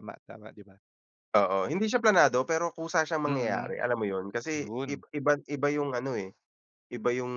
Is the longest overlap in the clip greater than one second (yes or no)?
no